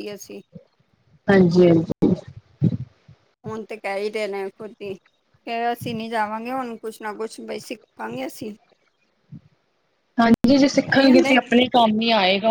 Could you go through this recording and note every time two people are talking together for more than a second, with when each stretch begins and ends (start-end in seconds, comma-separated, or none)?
none